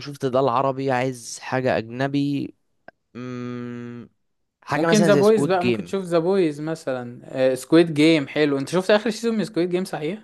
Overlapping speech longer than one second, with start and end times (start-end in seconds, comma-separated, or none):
4.8-6.0